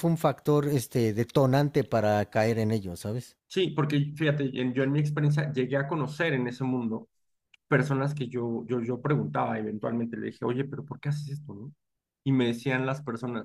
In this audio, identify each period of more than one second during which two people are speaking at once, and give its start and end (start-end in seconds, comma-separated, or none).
none